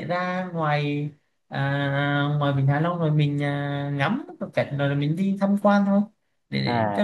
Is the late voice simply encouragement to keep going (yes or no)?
no